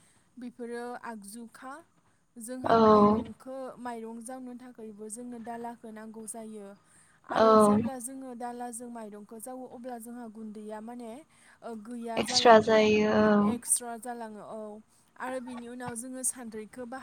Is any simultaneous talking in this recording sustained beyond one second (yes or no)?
no